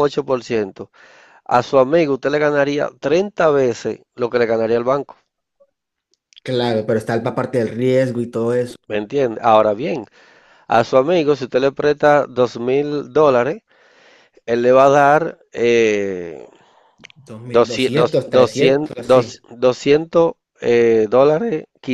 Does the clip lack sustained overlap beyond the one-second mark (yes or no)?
no